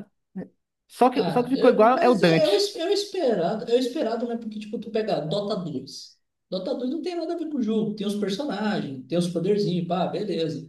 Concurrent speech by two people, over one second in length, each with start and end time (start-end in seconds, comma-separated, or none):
1.1-2.7